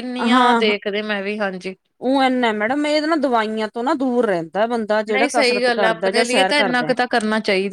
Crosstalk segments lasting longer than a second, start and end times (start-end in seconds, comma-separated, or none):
5.1-6.9